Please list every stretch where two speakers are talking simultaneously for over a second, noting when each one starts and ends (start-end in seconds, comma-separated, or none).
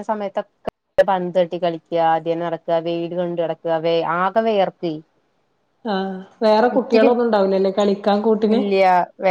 none